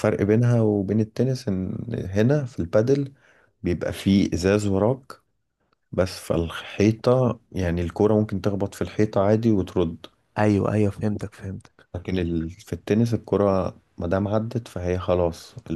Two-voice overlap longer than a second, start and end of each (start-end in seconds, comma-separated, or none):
none